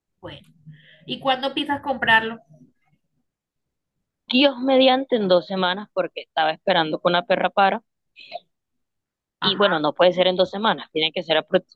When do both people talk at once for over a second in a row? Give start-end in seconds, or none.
none